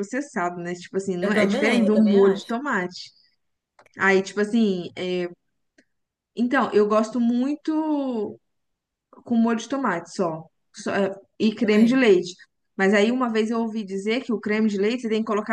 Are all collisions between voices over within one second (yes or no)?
no